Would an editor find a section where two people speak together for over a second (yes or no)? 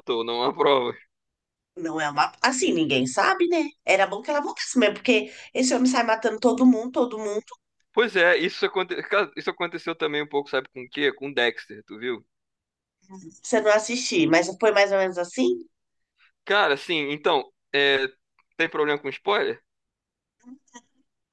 no